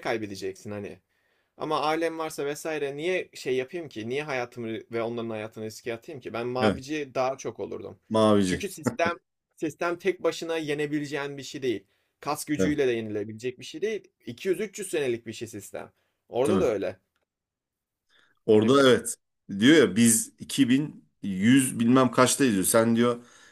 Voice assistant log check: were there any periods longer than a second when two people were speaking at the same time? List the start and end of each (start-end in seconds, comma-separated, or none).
none